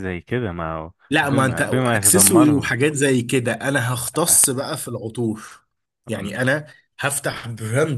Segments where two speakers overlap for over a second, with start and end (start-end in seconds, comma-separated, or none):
1.1-2.7